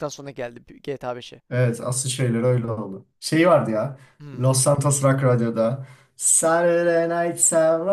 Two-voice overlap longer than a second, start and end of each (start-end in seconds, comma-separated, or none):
none